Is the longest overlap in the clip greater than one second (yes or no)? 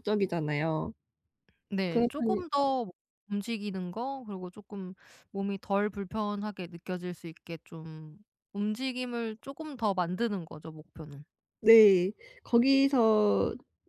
no